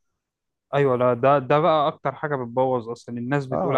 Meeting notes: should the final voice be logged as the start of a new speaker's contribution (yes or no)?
yes